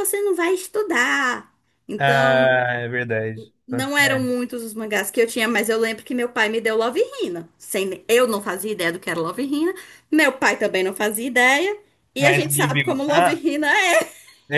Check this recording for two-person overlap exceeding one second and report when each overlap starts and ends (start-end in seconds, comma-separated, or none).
12.2-13.4